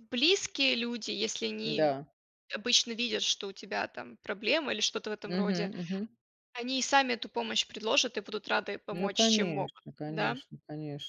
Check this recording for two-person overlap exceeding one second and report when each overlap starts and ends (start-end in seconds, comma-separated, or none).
8.9-10.4